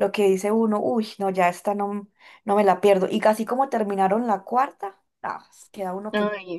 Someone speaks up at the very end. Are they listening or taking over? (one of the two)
taking over